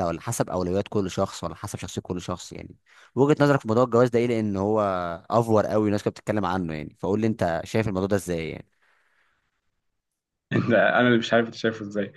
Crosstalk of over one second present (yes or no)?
no